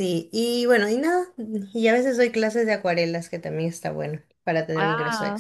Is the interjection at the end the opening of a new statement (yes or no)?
yes